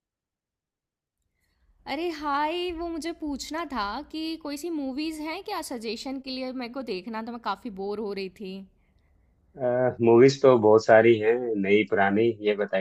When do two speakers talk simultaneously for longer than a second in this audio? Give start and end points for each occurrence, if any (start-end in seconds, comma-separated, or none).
none